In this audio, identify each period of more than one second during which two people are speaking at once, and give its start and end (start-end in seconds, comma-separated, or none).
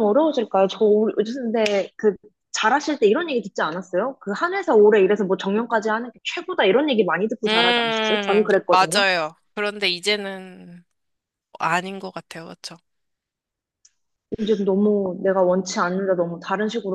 7.5-9.0